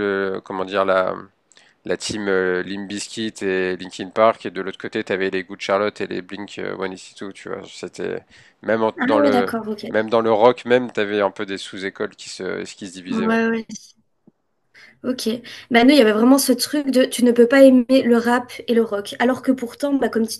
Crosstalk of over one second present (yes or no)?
no